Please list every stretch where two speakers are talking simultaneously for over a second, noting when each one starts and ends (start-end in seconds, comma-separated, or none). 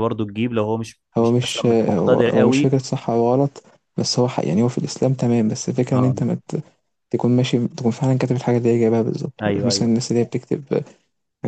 1.2-2.8